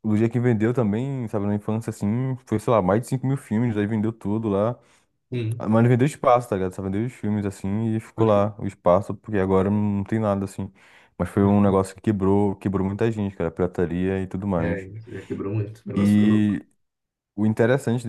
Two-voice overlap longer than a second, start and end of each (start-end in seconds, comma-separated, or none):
none